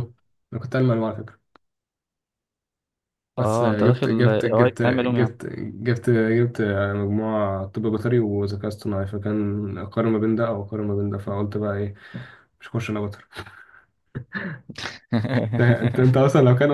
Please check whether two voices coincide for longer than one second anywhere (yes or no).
yes